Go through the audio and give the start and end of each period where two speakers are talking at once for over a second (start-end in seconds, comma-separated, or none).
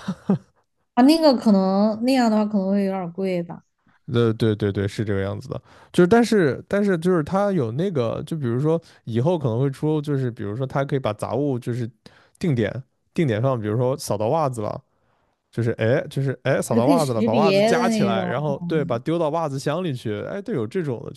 16.7-18.3